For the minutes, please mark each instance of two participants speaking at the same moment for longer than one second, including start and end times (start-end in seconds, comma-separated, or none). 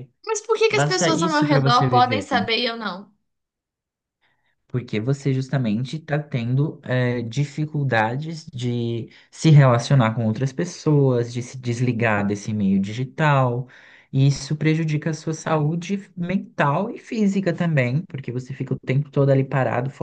0.7-2.3